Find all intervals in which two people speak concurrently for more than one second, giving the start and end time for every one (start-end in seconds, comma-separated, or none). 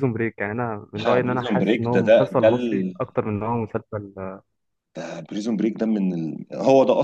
0.9-3.0